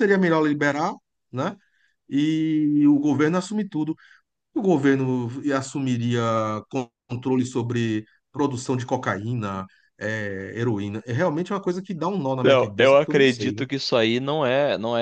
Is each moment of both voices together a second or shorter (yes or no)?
no